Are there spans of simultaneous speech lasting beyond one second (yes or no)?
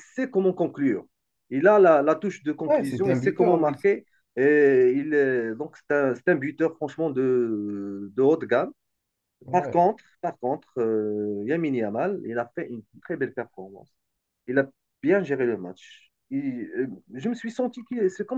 yes